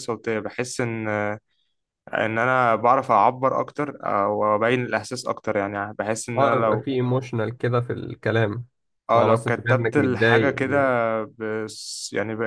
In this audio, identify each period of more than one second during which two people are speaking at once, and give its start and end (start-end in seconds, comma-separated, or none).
9.2-10.6